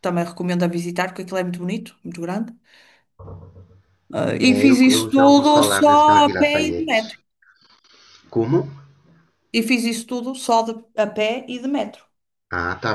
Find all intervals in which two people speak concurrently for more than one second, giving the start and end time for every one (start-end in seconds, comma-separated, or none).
4.4-7.2